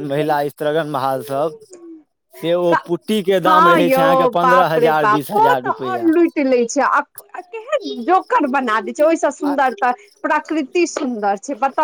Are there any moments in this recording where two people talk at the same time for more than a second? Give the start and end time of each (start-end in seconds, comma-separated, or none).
4.0-6.1